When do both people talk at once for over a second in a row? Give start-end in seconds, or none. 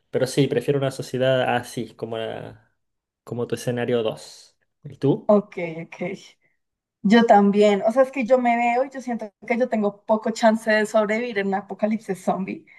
none